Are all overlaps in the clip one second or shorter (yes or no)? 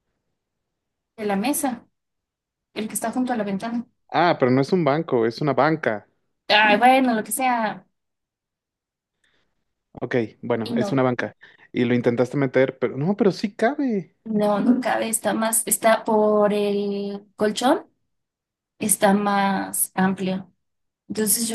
yes